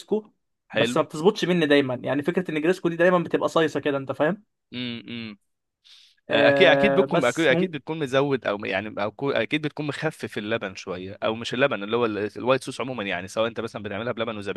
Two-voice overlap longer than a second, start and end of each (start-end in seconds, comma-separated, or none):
6.3-7.8